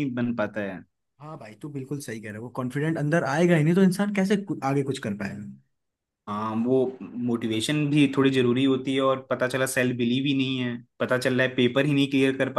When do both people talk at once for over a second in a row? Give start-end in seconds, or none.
none